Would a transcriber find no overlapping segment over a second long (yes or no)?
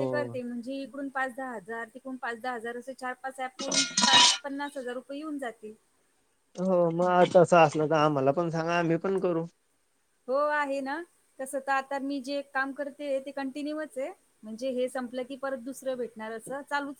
yes